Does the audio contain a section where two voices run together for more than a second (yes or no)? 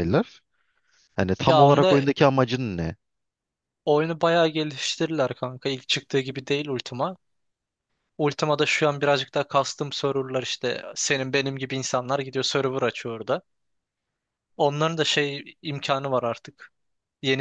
no